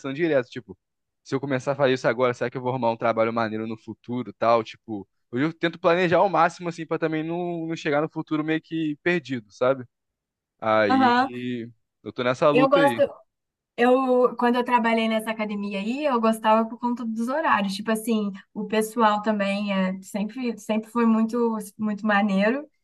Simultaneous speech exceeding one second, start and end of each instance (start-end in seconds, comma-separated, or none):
none